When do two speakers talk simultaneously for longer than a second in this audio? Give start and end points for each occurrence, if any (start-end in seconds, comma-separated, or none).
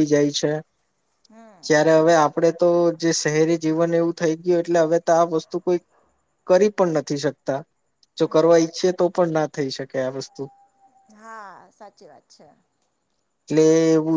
none